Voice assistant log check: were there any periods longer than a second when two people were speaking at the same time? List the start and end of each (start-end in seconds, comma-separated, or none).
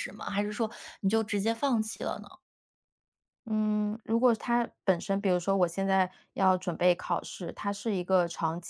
none